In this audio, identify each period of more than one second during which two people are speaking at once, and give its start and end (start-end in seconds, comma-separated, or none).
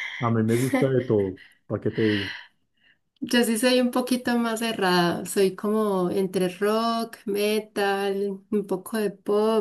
none